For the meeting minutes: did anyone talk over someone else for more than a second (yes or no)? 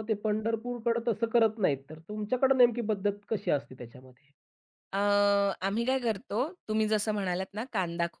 no